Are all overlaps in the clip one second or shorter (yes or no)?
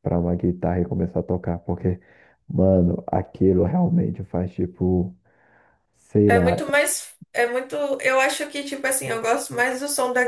yes